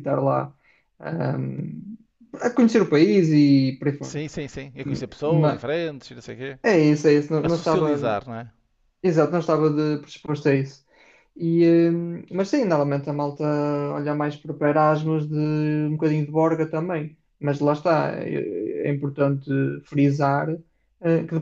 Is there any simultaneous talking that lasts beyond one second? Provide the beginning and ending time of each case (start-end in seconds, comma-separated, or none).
none